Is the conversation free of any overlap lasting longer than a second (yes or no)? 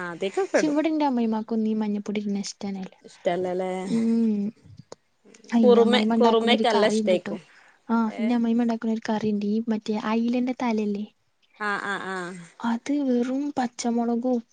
no